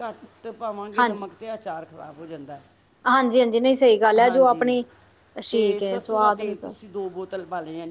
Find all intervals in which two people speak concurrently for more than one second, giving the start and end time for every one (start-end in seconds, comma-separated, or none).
5.5-6.7